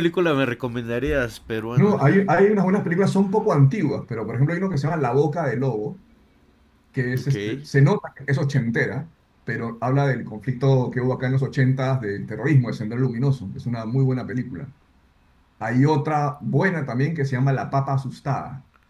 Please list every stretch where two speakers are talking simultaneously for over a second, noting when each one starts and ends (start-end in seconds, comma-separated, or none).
none